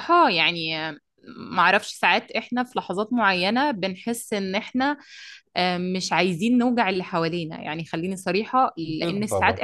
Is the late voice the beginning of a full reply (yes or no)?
no